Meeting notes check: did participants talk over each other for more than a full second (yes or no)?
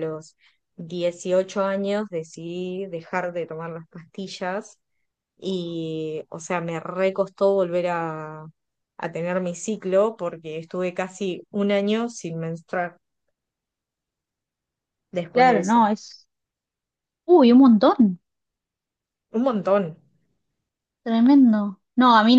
no